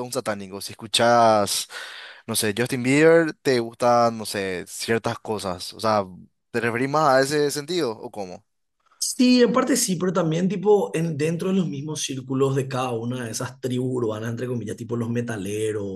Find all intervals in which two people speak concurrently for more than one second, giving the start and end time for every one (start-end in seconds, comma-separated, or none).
none